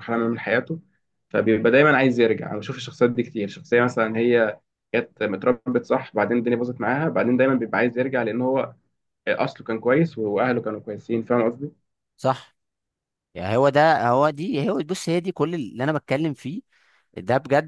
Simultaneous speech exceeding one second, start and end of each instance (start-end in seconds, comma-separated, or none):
none